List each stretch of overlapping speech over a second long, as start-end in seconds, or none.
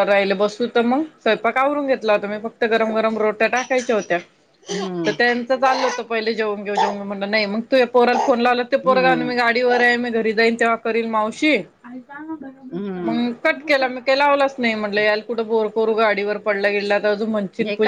none